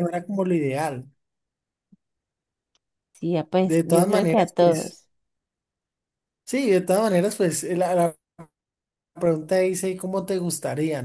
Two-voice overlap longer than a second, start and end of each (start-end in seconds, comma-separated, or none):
3.6-5.0